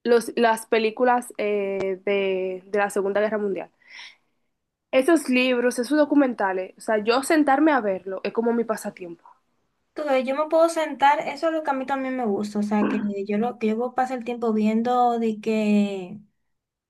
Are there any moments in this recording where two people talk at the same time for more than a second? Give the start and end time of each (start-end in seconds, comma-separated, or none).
none